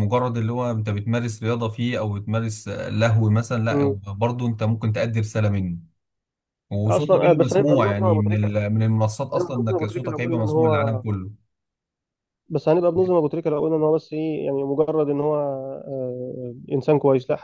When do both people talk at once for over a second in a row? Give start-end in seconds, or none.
6.9-8.5, 9.4-11.0